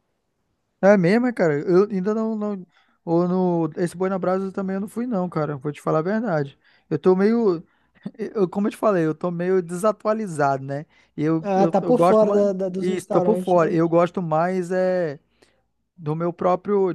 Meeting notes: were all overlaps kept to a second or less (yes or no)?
no